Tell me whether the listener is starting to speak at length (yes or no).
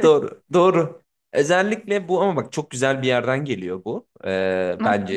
no